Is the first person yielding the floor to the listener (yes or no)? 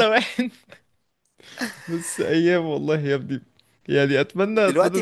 yes